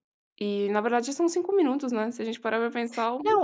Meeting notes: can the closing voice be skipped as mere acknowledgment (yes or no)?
no